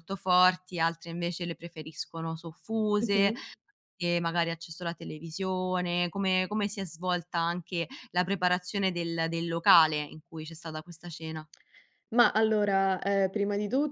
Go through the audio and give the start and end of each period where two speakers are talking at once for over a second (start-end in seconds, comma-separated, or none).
none